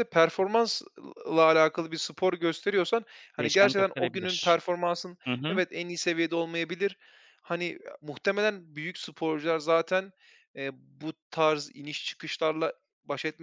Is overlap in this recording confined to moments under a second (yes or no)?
no